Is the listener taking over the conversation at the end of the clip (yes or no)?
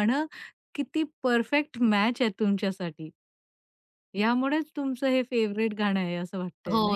yes